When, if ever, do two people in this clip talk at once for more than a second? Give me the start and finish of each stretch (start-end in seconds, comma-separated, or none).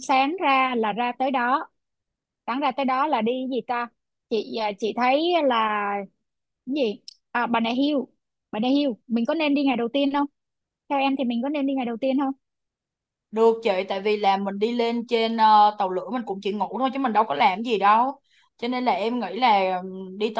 none